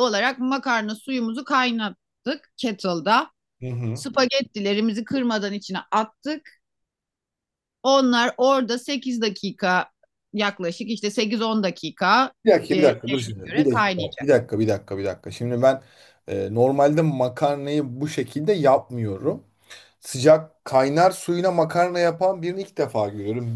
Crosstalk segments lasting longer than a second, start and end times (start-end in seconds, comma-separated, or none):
12.7-14.3